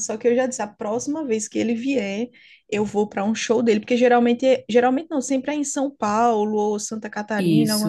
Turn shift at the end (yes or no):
no